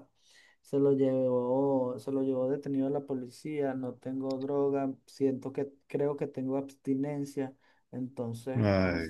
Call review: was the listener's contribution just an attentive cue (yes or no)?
no